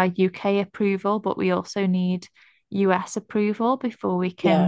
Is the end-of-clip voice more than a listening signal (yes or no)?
no